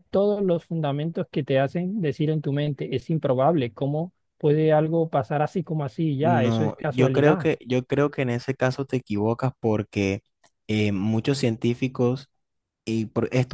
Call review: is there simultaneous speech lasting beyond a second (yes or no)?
yes